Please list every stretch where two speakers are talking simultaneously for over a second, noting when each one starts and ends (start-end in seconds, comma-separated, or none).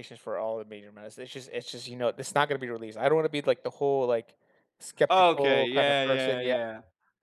5.1-6.5